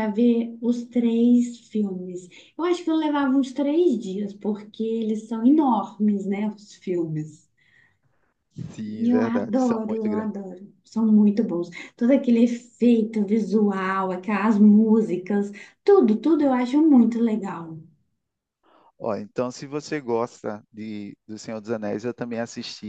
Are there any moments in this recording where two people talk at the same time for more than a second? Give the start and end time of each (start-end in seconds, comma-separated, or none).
9.0-10.3